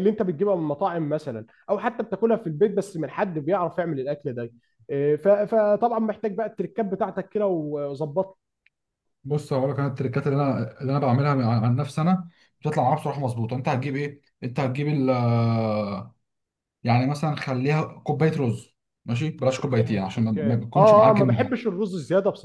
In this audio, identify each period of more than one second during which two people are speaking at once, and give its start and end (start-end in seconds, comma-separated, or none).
19.6-21.6